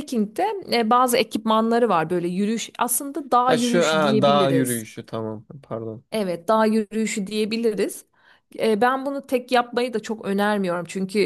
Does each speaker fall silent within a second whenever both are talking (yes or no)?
no